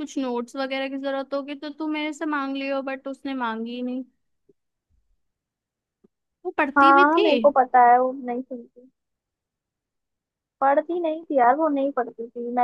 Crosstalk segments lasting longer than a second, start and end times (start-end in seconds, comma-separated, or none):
none